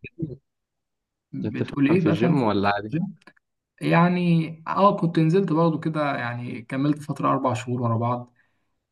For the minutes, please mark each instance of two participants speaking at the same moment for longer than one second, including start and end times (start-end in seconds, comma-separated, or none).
1.4-3.0